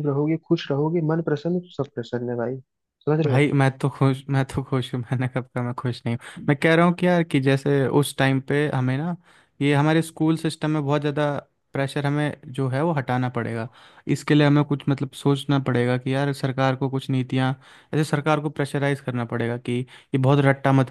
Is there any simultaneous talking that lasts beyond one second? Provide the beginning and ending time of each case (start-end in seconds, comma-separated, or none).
none